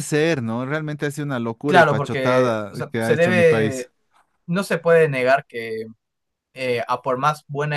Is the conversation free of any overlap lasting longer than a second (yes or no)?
no